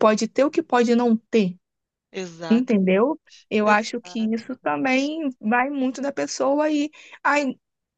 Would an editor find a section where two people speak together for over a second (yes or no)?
yes